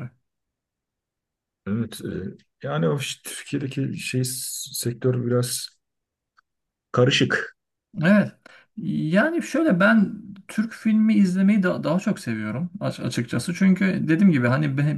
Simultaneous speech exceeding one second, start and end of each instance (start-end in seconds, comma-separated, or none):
none